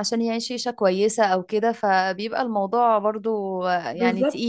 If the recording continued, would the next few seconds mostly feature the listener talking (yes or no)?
yes